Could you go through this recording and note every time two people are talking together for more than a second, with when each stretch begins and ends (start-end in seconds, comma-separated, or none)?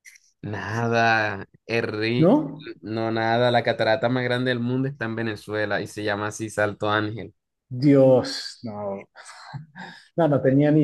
none